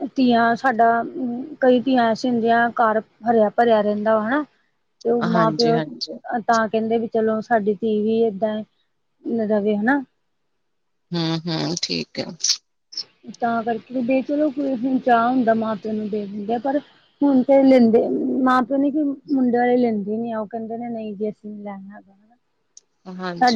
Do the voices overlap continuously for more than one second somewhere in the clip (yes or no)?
no